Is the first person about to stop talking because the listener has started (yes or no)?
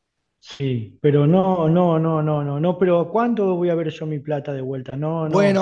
yes